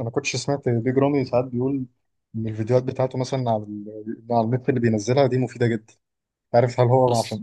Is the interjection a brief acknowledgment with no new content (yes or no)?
yes